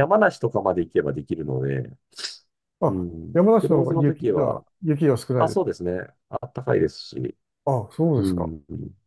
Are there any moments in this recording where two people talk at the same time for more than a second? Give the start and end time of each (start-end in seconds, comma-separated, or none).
2.9-4.6